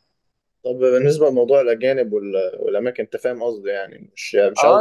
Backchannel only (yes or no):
no